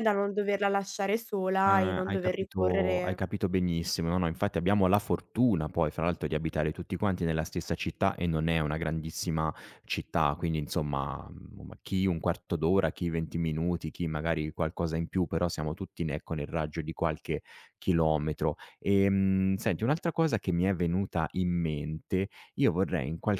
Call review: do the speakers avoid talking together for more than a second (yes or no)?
no